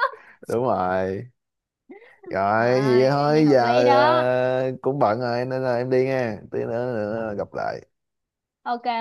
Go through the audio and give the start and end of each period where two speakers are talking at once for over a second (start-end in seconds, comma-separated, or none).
2.5-4.3